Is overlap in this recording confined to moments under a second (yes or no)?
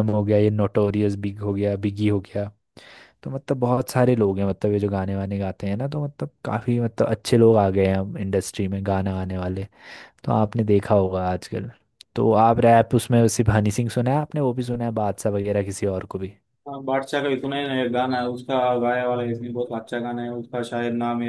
yes